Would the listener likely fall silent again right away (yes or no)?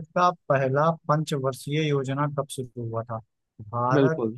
yes